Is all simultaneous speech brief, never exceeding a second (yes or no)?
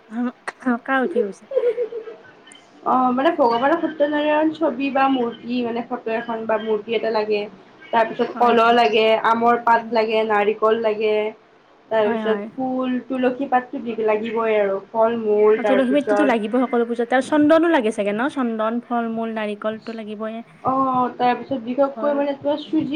no